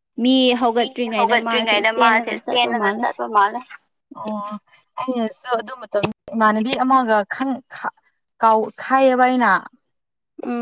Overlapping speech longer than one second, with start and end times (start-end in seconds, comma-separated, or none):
0.8-3.0